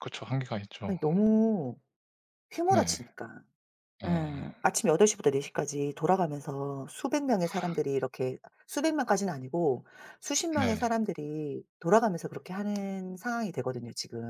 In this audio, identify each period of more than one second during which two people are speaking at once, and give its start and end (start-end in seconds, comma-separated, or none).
none